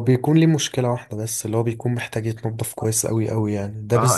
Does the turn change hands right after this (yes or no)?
yes